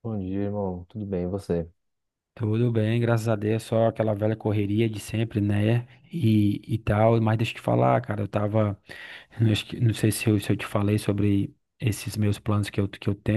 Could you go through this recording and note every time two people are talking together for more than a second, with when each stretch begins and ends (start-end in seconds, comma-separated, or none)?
none